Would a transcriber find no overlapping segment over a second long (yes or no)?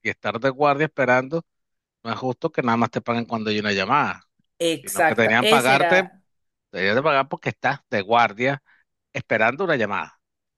no